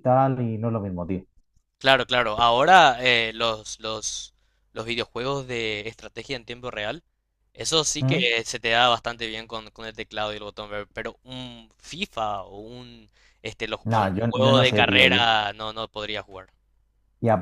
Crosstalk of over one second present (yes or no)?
yes